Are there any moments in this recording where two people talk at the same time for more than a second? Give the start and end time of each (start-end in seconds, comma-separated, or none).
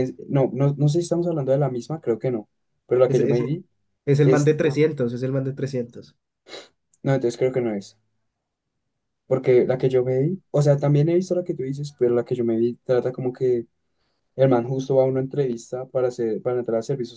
none